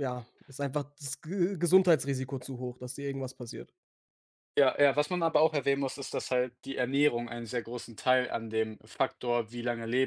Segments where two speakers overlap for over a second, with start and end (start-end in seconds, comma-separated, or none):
none